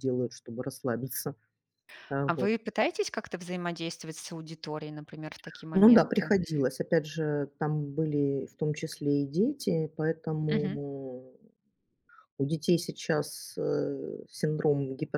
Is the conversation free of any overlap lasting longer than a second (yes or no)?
yes